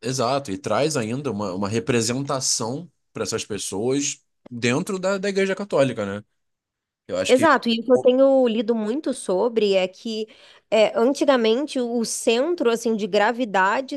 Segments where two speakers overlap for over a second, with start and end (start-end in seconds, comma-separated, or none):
none